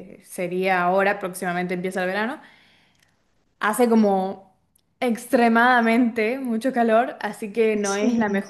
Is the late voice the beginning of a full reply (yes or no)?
no